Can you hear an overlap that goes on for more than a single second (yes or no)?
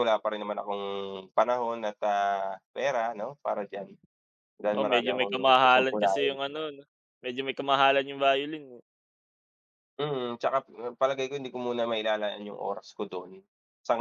yes